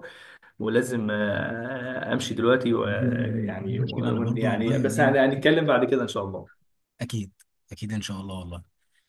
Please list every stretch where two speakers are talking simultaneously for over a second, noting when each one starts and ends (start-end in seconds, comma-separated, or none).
2.8-5.2